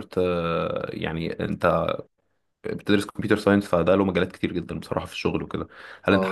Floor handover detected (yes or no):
no